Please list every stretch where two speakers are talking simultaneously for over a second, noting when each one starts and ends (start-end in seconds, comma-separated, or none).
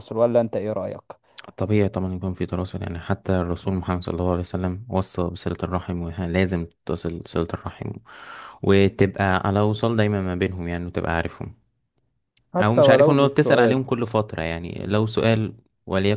12.6-13.8